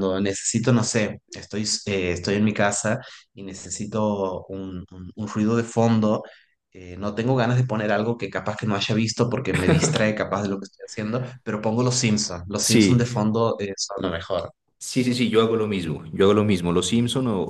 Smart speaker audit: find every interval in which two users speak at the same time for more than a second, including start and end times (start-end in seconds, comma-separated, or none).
none